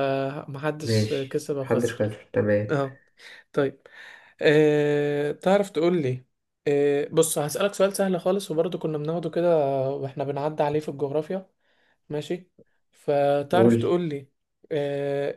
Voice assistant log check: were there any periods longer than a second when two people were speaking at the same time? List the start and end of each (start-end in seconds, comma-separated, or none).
0.8-2.1